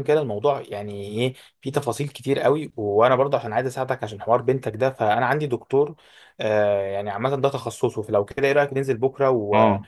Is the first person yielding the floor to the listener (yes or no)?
yes